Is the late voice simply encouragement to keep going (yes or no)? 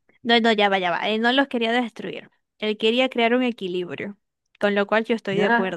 no